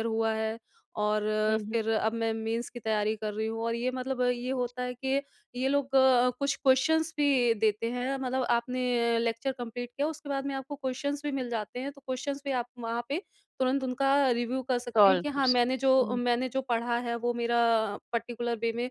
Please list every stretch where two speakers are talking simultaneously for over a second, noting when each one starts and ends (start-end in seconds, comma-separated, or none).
14.9-16.2